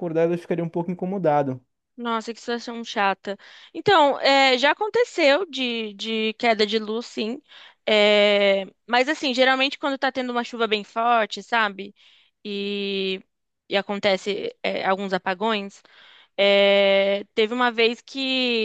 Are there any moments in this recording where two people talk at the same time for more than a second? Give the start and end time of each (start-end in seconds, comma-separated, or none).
none